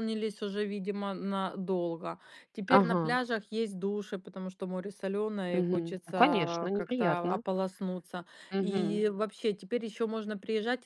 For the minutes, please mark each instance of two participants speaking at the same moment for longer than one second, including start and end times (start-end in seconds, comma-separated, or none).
5.5-7.4